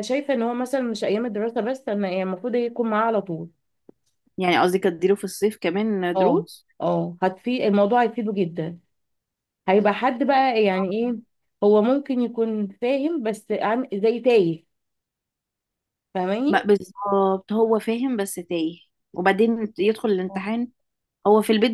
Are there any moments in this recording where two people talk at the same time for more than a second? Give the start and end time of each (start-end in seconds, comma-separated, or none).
none